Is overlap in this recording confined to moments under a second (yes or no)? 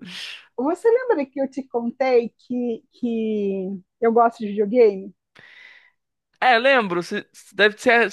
yes